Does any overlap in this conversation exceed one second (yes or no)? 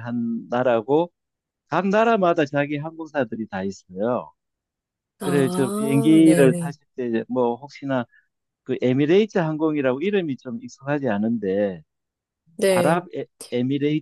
yes